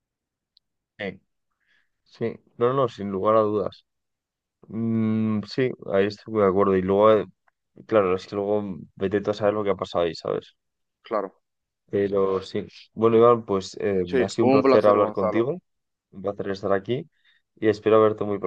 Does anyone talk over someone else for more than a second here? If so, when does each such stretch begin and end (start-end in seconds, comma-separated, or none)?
14.0-15.5